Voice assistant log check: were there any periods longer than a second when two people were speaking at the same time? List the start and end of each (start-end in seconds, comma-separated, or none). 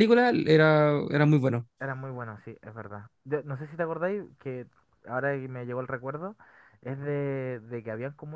none